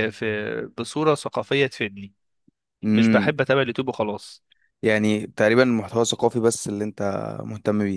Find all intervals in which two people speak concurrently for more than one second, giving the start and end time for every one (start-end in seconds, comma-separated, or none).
none